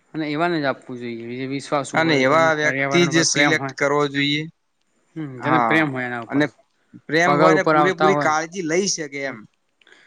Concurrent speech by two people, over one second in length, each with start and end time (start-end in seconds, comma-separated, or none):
2.0-3.7